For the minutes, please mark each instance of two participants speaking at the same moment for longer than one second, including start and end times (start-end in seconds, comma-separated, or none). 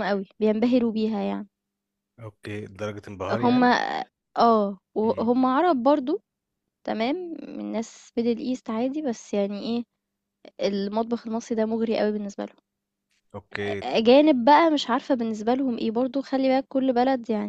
none